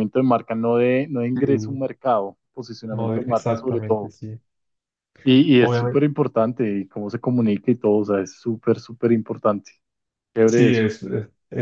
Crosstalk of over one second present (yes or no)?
yes